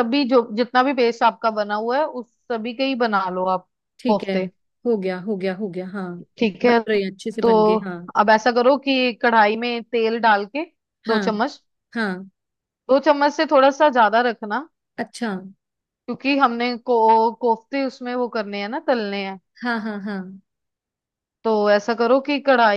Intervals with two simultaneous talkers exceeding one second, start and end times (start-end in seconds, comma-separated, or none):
none